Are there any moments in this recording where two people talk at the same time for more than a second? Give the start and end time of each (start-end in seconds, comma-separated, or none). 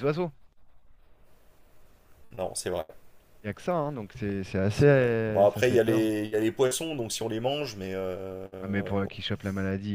4.7-6.1